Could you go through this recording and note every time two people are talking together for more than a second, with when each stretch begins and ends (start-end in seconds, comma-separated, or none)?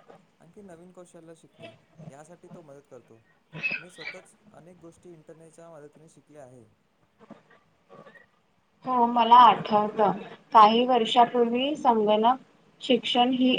none